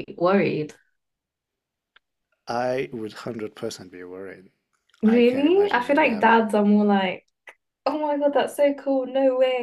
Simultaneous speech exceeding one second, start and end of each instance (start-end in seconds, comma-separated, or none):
5.0-6.4